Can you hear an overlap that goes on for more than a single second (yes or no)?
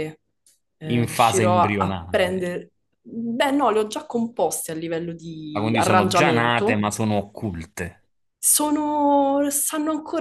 yes